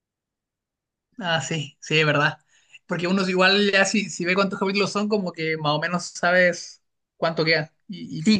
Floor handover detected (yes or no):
yes